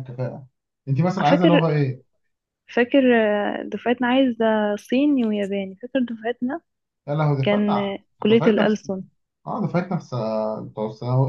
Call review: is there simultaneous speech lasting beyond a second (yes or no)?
yes